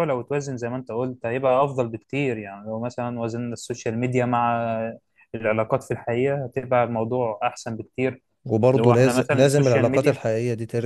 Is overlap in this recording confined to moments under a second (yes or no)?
no